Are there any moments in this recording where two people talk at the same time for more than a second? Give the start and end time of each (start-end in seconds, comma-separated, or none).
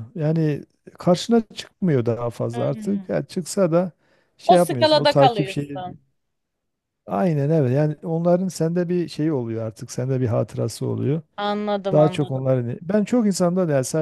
4.4-5.8